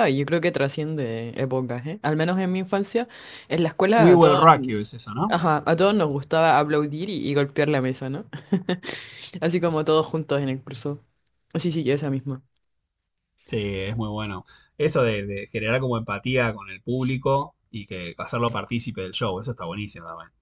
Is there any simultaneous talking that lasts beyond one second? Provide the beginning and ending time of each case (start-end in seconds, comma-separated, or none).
none